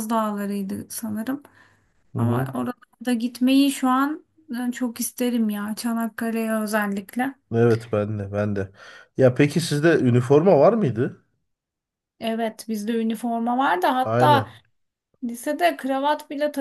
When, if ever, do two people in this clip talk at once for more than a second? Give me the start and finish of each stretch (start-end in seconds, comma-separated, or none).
none